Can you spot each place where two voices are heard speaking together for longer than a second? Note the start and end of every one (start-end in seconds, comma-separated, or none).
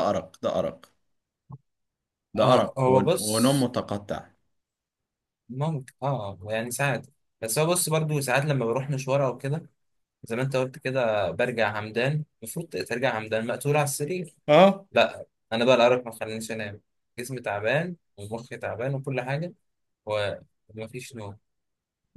2.4-3.7